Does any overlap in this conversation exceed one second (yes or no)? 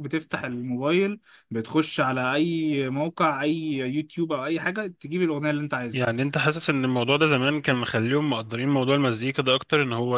no